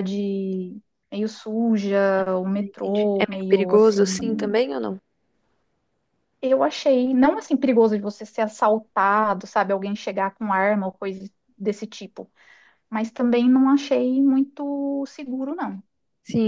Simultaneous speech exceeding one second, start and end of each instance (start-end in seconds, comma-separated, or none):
2.5-4.6